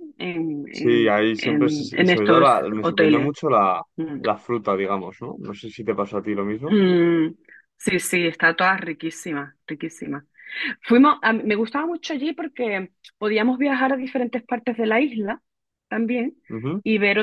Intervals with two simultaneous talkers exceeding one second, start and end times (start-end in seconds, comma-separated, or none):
0.7-3.3